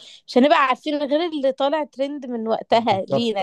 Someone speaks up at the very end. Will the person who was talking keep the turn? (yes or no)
no